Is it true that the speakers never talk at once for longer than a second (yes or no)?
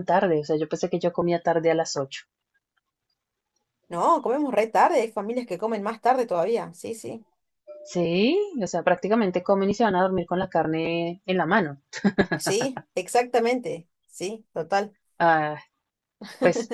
yes